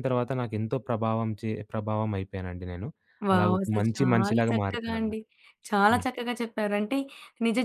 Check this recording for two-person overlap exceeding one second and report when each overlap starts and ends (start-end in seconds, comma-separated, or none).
3.3-5.2